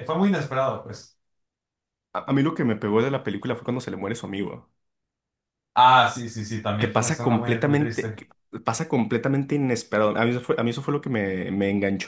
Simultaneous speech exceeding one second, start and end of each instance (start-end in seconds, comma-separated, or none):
6.8-8.2